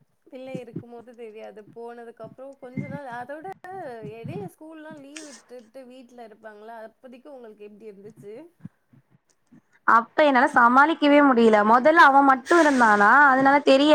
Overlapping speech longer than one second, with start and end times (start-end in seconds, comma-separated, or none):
none